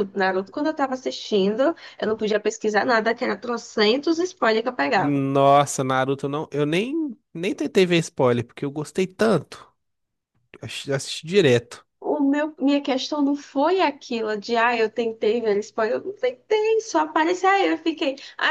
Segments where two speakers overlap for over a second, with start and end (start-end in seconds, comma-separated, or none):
none